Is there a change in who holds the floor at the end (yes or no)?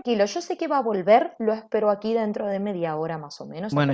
yes